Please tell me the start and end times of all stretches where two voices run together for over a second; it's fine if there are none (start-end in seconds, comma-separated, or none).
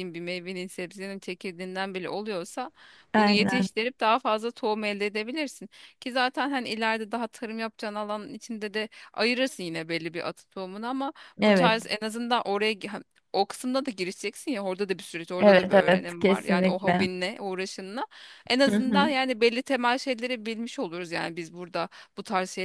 15.4-17.1